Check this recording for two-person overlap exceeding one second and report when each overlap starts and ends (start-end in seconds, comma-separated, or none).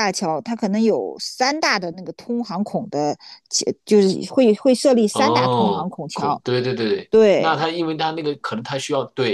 5.1-6.4